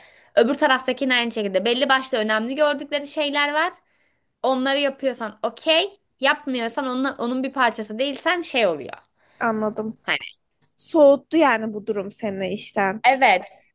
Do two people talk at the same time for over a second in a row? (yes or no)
no